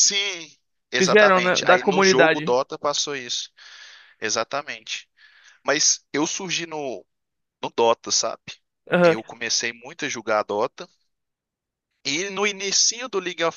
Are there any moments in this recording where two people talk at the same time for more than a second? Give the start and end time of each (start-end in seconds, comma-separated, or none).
1.0-2.5